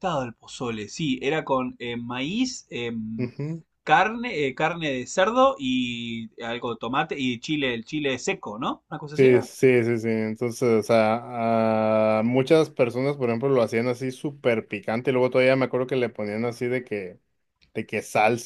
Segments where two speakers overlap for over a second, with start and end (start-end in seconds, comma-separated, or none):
none